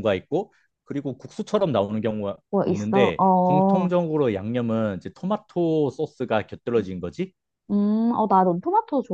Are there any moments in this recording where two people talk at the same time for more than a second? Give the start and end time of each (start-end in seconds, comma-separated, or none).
2.5-3.9